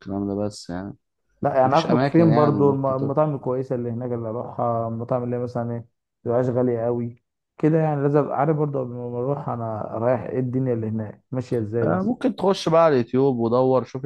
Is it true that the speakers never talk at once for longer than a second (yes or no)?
no